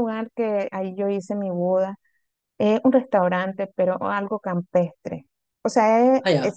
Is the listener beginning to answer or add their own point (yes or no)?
no